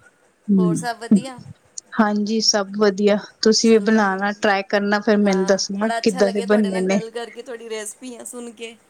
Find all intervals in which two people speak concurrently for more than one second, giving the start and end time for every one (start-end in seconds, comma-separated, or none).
5.2-7.0